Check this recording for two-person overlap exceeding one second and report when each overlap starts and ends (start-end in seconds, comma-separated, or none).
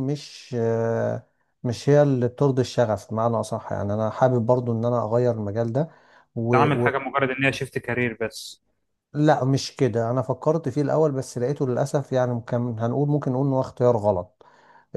none